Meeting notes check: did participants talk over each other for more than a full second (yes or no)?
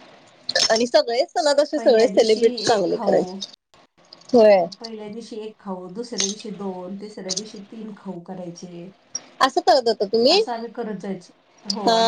yes